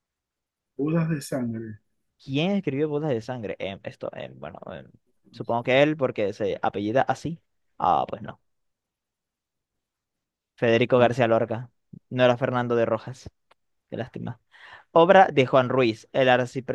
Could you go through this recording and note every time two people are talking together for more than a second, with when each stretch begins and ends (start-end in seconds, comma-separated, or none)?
none